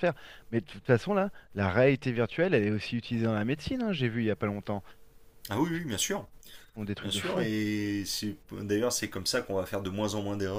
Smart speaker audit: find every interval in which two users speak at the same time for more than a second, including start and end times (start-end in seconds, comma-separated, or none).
none